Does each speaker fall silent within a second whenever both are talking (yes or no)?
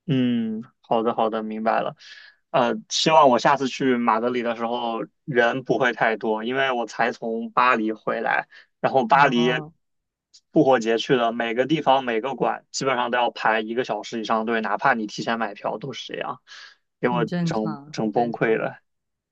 no